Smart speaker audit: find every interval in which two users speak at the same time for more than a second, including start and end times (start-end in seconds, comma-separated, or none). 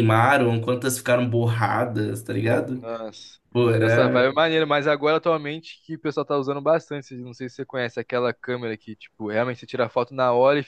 none